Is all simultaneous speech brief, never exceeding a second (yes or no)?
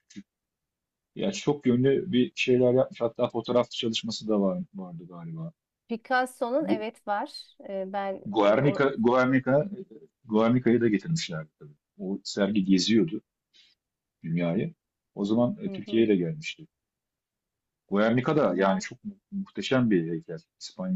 yes